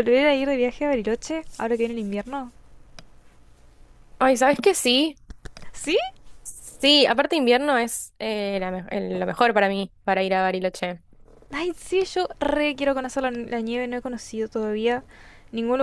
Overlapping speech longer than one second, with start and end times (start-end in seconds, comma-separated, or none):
none